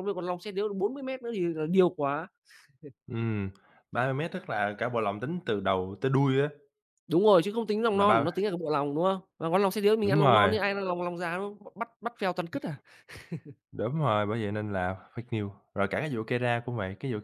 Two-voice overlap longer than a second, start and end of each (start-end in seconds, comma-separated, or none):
none